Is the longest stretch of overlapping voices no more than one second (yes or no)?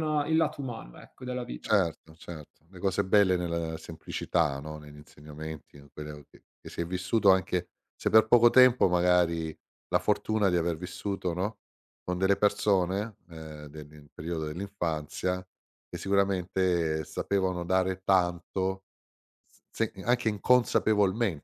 yes